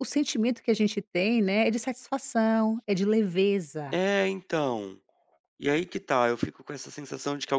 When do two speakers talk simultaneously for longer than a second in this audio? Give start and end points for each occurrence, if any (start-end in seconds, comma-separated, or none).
none